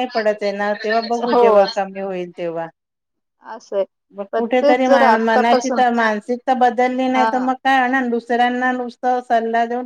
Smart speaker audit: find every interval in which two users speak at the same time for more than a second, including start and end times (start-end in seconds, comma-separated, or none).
4.3-5.8